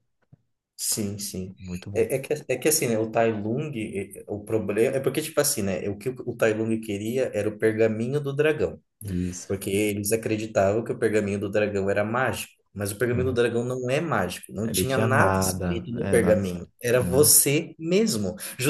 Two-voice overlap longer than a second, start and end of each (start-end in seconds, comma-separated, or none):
14.6-17.4